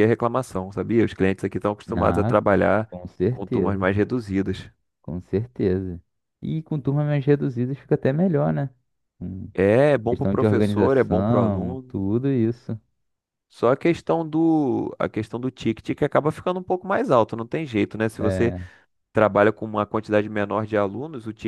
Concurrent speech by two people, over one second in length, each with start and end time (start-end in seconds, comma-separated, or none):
10.1-12.0